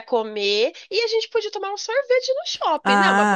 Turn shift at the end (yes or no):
yes